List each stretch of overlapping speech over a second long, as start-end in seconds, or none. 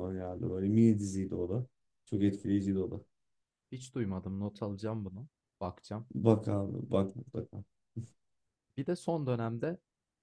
none